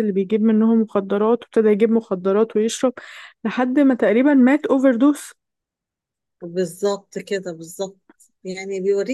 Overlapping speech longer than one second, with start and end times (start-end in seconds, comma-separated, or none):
none